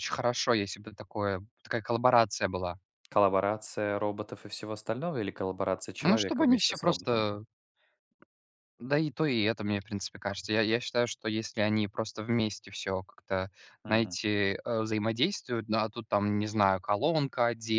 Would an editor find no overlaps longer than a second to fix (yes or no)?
no